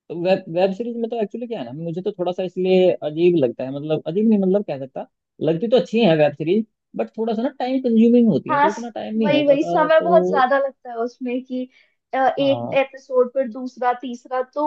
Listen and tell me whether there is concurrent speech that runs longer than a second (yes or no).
yes